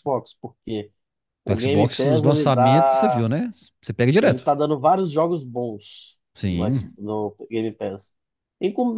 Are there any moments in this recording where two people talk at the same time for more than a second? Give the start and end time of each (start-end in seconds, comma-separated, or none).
1.4-3.2